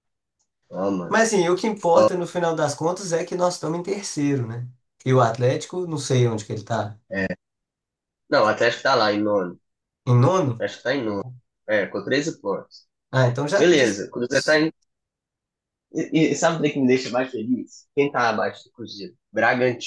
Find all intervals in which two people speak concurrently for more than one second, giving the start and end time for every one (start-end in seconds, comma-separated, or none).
none